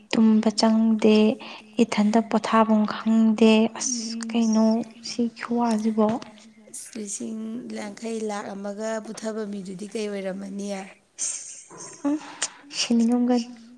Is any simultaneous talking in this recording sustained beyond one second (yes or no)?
no